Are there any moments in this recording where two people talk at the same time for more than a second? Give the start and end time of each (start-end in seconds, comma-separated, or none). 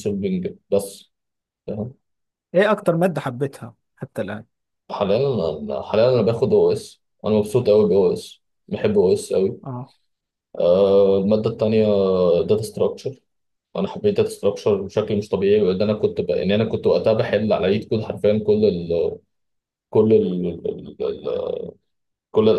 none